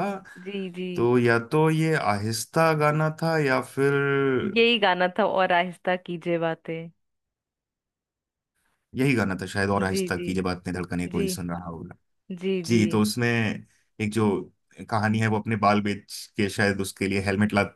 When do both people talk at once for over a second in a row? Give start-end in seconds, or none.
none